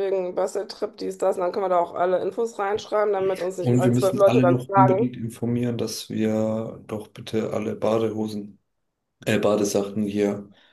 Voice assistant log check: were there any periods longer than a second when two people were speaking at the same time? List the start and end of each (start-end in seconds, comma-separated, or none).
3.6-5.1